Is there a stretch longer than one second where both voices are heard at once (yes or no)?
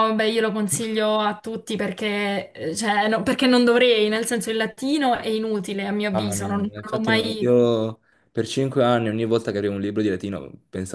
yes